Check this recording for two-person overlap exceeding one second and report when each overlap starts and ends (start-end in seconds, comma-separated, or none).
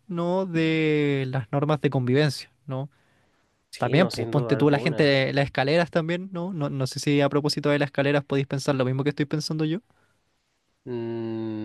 3.8-5.2